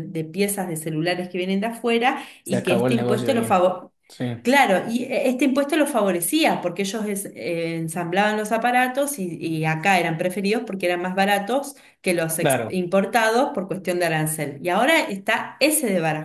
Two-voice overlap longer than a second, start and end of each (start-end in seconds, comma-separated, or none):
2.4-3.7